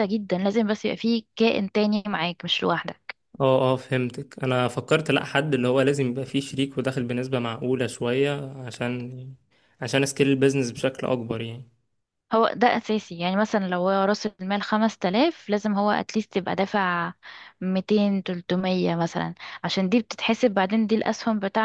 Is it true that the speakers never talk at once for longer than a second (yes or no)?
yes